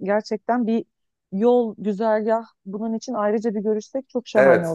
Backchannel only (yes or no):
no